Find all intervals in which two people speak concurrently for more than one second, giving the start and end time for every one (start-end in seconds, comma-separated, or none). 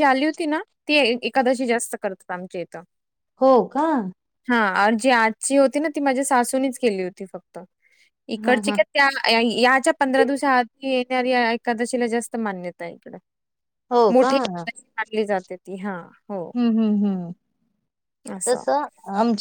none